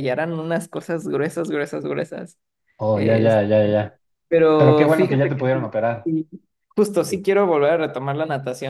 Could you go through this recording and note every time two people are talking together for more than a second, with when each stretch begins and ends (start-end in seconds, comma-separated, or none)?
4.6-6.1